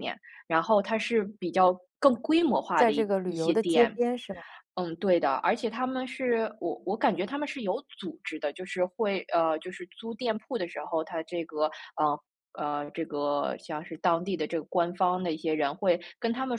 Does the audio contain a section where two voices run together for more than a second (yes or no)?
yes